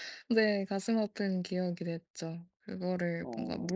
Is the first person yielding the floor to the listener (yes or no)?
no